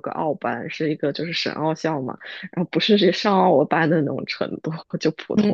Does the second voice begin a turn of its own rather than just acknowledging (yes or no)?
no